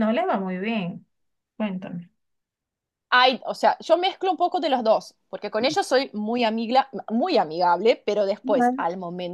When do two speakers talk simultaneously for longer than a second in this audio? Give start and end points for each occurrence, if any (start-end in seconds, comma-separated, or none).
none